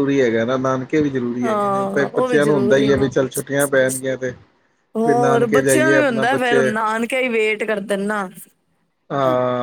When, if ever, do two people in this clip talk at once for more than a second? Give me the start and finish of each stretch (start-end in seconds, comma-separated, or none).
1.4-3.0, 5.0-6.7